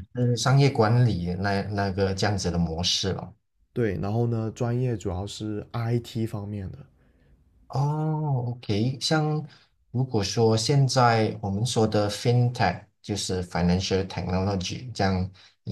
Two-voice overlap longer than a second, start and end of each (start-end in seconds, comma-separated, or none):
none